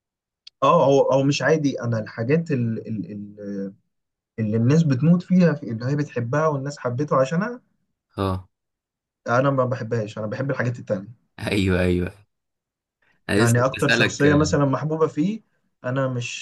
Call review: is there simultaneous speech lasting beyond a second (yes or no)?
yes